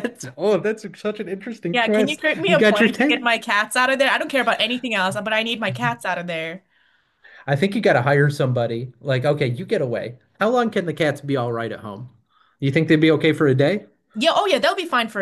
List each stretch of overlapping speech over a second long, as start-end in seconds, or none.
1.7-3.3